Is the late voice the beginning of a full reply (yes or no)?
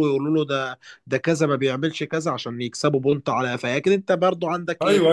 yes